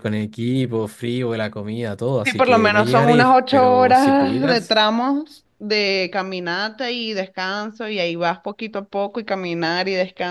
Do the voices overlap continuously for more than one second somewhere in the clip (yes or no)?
yes